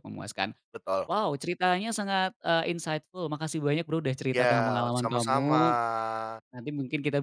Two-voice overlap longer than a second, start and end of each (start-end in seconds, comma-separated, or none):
4.3-5.6